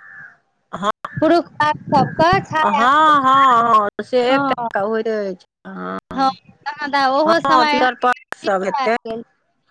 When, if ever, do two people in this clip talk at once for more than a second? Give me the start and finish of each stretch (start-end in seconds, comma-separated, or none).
7.7-8.9